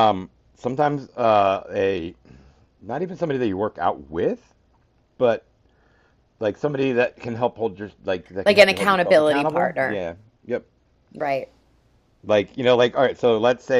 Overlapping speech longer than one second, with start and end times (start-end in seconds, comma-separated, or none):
8.4-10.0